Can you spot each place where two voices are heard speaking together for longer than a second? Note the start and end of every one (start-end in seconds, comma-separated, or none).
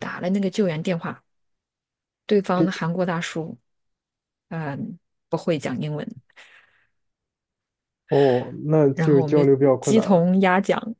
8.9-10.2